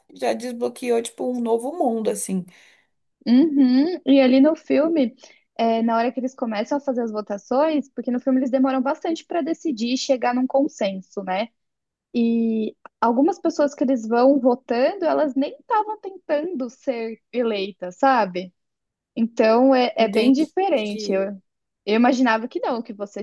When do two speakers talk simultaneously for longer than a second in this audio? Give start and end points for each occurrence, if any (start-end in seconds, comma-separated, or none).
20.0-21.2